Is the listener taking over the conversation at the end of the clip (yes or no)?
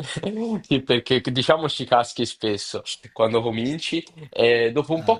no